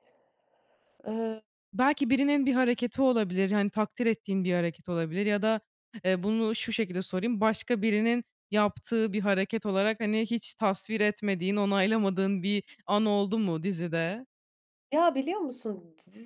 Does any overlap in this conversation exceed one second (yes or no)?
no